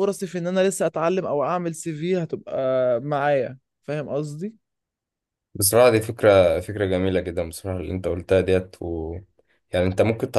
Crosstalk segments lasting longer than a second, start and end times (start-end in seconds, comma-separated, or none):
none